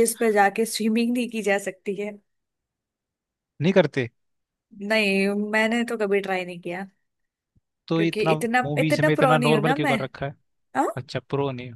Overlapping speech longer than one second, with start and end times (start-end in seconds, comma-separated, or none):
8.0-10.0